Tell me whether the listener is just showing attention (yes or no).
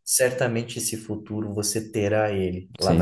no